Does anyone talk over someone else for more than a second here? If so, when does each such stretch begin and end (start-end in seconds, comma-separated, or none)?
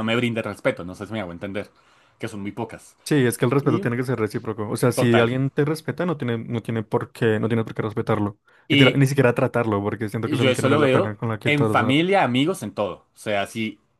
10.2-12.0